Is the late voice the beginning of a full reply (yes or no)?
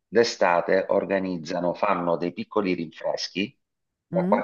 no